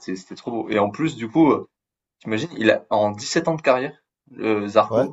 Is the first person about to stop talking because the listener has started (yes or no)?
no